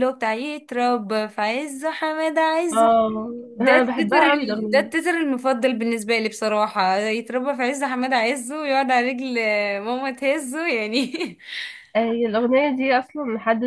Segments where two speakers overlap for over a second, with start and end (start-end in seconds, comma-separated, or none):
3.5-4.9